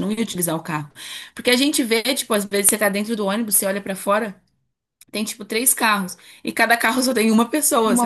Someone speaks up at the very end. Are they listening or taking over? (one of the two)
listening